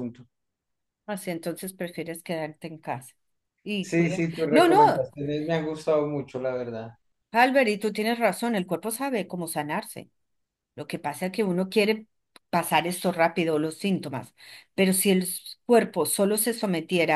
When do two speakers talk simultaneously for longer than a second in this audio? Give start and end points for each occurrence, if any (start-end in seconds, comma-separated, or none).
3.8-5.1